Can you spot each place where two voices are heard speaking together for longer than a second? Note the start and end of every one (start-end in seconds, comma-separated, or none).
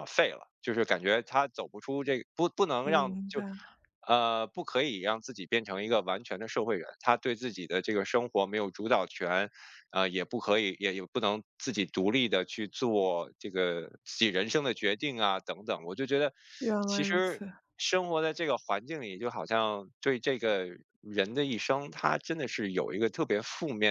none